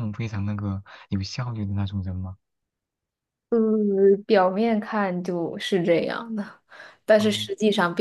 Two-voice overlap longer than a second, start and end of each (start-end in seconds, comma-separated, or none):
none